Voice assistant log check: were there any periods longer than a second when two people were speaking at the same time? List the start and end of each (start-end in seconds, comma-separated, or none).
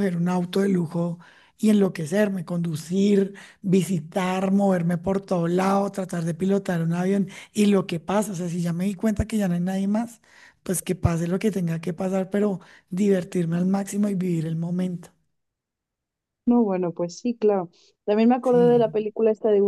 none